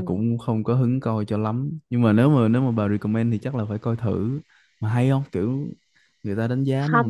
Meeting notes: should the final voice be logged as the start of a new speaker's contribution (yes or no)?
yes